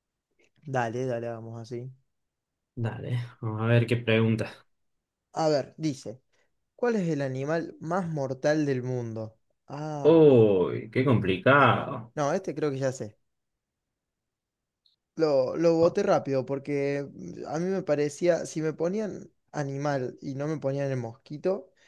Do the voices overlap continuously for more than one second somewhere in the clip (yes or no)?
no